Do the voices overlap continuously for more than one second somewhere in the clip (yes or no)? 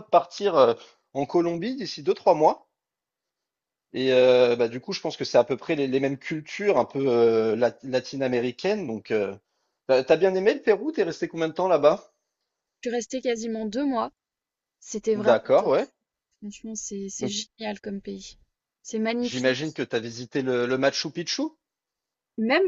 no